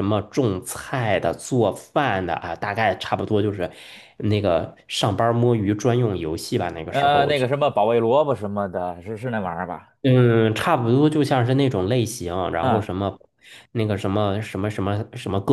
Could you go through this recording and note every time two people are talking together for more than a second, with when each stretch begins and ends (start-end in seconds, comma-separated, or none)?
none